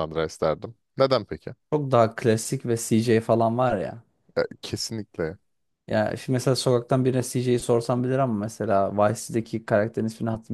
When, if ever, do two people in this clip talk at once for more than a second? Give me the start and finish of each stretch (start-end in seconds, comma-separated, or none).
none